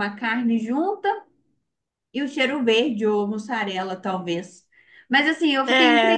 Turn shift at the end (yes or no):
no